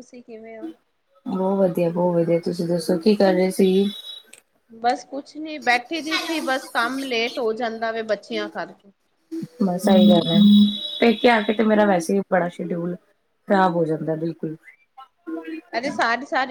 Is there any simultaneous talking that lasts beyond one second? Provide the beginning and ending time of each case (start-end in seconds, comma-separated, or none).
none